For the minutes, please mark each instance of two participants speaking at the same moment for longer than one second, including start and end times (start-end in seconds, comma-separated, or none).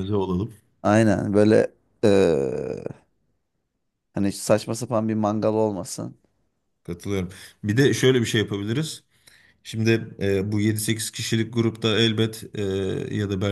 none